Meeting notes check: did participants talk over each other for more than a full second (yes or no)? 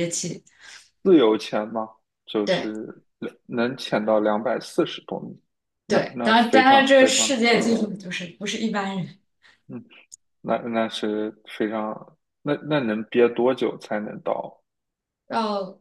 yes